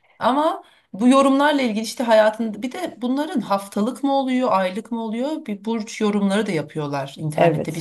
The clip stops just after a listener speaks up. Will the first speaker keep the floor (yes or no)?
yes